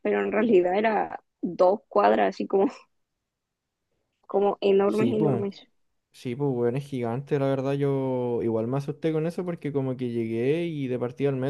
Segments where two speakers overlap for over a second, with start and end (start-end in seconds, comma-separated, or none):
none